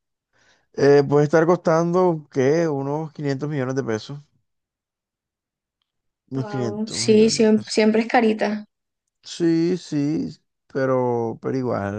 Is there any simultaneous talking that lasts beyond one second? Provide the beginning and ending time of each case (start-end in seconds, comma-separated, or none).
6.3-7.8